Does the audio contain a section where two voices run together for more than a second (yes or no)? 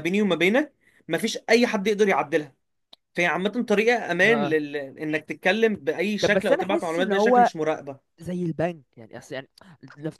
yes